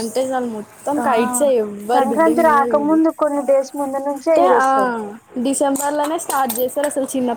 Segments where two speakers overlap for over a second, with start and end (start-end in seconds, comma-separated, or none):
none